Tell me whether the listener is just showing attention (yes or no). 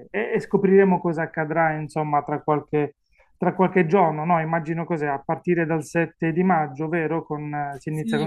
no